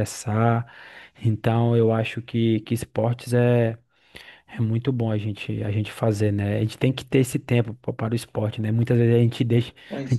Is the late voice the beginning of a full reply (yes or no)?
no